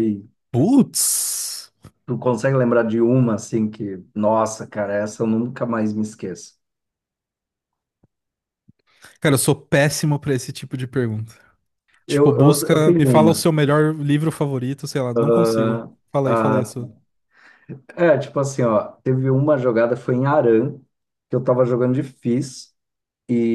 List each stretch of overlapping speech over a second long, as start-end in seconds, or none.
12.1-13.4, 15.3-16.9